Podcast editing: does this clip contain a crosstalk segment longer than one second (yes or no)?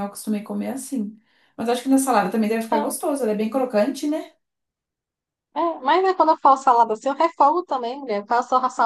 no